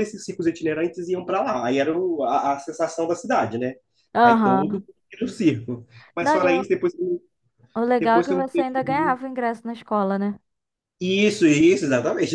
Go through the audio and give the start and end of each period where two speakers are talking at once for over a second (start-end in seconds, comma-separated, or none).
8.0-9.2